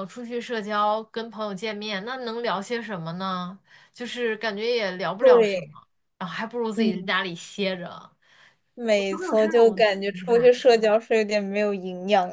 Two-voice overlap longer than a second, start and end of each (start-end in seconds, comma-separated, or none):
8.9-10.5